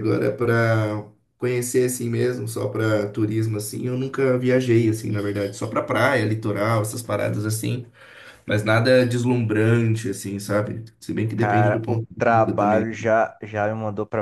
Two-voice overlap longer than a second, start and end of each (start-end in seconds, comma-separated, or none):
11.3-12.9